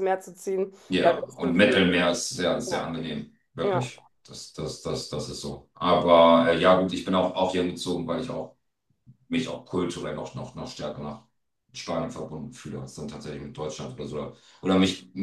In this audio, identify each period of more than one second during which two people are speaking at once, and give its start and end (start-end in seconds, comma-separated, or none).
none